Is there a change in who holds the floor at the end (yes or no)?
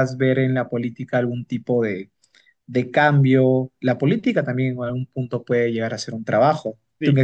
yes